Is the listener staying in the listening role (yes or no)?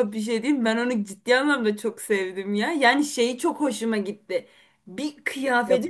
yes